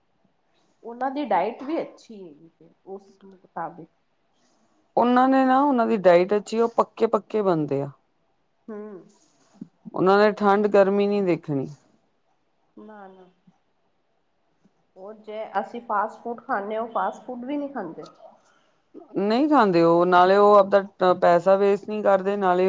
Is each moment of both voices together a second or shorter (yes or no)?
yes